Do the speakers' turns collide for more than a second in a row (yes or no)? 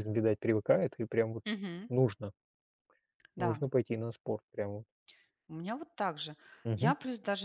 no